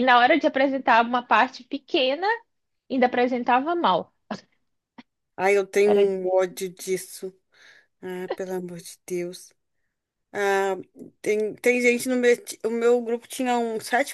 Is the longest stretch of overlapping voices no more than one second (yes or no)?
yes